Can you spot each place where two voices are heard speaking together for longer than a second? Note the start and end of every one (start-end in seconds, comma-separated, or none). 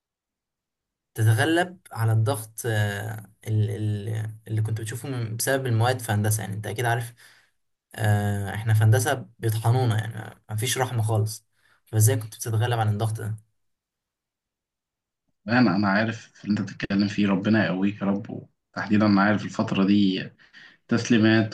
none